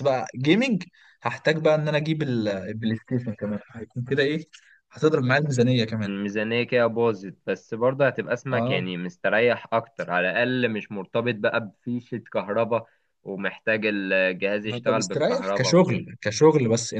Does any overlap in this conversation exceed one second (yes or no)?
yes